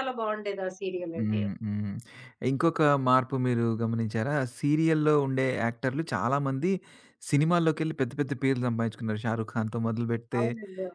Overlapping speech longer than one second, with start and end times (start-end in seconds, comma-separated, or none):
none